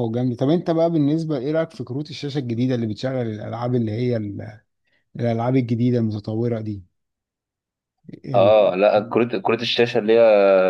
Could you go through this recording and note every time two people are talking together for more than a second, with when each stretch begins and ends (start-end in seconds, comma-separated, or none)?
none